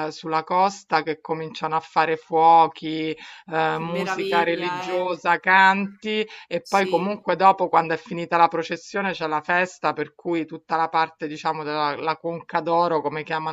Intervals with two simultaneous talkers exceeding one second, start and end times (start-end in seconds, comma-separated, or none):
3.7-5.1